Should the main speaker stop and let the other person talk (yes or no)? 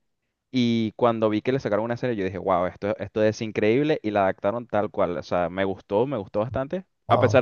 no